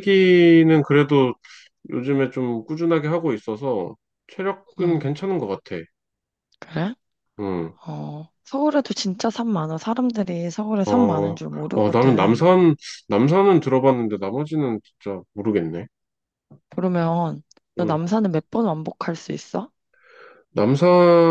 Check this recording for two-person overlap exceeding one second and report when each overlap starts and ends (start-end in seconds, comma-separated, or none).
10.8-12.5